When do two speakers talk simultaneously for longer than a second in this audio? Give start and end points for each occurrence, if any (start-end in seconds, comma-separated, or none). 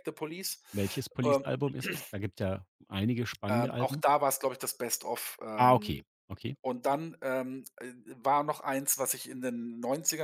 none